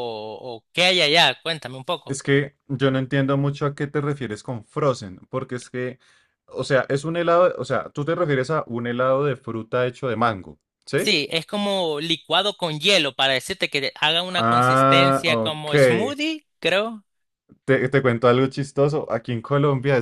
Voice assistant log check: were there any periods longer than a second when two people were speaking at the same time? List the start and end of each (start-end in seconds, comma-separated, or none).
14.3-15.7